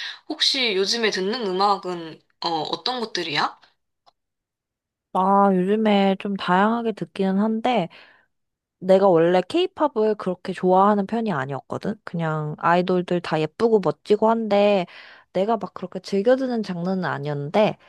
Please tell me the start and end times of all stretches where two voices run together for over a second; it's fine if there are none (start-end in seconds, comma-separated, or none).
none